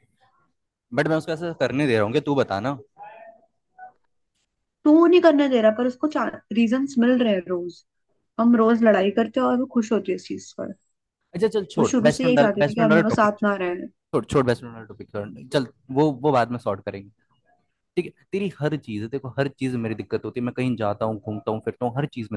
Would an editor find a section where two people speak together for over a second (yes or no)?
yes